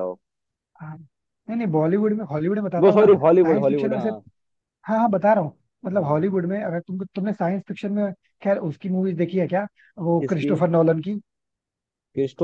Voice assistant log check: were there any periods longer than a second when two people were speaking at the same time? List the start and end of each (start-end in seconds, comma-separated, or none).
2.8-4.1